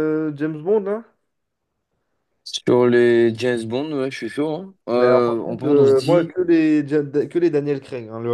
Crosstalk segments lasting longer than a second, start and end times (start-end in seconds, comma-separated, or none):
4.9-6.3